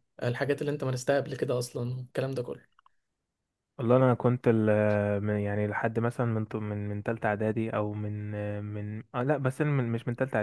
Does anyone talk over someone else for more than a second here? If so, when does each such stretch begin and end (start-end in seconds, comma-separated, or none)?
none